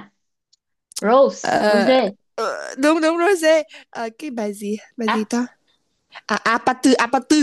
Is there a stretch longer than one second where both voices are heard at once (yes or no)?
no